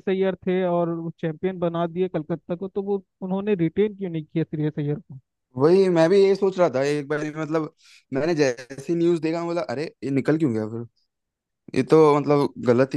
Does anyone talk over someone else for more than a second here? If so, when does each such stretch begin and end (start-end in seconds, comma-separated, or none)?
none